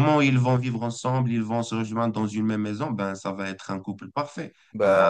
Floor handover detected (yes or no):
no